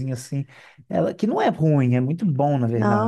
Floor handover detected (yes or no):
yes